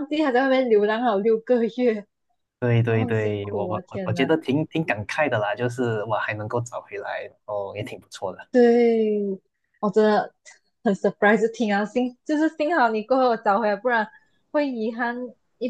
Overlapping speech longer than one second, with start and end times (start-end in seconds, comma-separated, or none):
2.8-4.3